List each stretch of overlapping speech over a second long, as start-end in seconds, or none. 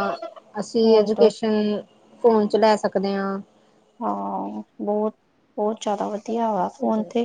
none